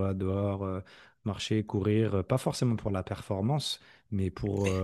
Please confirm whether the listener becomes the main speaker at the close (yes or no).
no